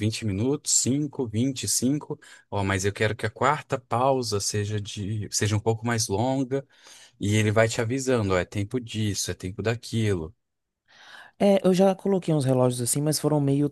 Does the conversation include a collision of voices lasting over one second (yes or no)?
no